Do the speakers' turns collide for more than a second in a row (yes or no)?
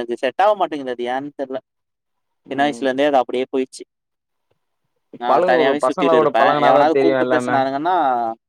yes